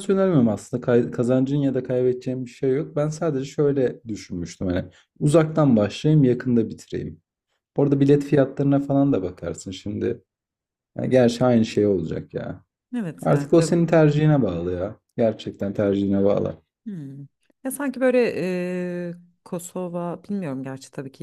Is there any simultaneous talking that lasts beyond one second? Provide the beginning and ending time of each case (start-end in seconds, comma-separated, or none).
none